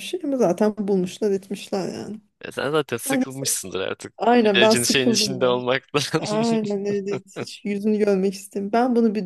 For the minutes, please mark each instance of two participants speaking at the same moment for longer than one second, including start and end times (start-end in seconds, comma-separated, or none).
4.2-5.5